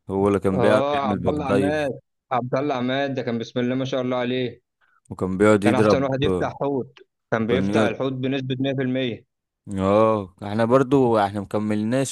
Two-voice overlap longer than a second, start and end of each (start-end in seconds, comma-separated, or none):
0.6-1.9